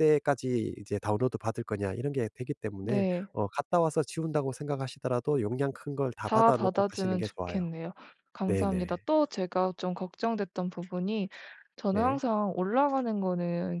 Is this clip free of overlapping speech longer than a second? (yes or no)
no